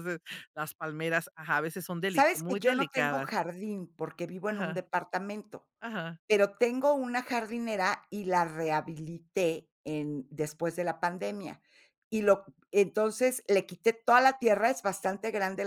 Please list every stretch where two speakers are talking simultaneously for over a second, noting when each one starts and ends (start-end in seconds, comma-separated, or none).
2.1-3.3